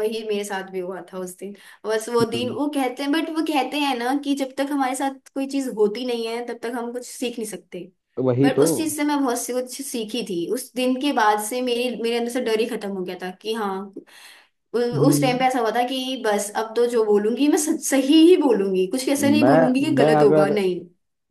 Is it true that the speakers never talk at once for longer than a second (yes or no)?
no